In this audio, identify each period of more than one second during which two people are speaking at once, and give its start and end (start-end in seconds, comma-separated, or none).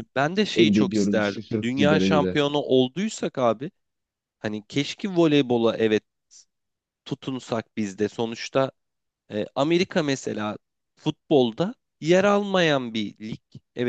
0.6-2.4